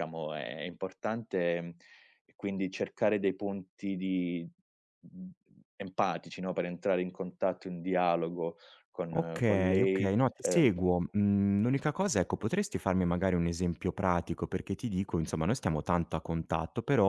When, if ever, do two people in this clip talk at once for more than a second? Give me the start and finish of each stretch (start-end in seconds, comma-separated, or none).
9.2-10.7